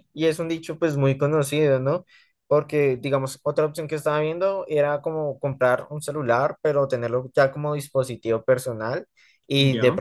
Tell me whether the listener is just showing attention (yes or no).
yes